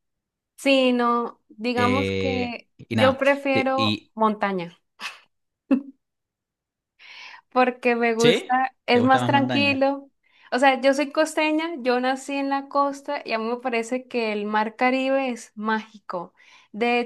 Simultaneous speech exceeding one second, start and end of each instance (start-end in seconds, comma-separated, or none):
1.8-4.1, 8.2-9.9